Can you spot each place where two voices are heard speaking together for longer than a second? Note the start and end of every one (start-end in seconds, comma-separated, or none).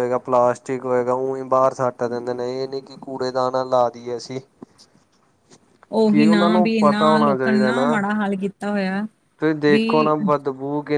6.1-7.3